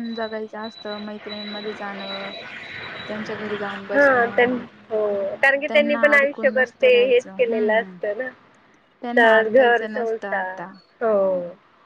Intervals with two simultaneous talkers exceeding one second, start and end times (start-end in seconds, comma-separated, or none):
5.7-8.0, 9.2-10.6